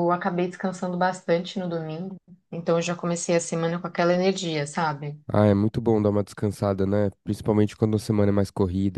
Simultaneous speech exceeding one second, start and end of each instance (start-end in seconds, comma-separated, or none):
none